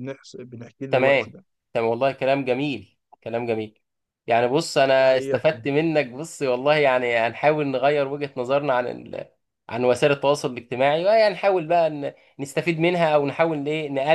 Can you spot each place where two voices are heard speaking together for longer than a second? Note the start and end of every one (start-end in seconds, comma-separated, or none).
none